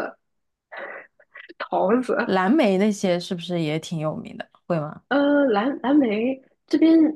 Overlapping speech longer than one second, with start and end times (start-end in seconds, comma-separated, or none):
none